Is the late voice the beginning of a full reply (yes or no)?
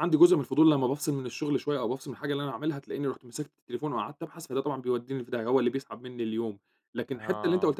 no